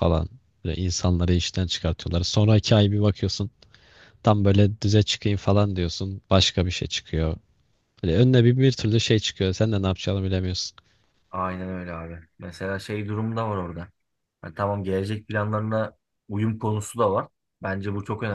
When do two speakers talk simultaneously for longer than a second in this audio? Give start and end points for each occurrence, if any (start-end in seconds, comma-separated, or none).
none